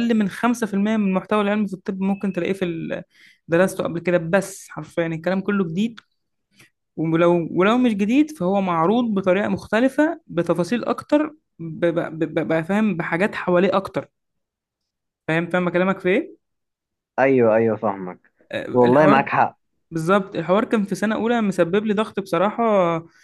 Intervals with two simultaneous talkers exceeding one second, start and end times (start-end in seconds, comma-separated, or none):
none